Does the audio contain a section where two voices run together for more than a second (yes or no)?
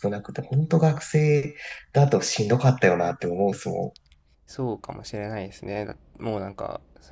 no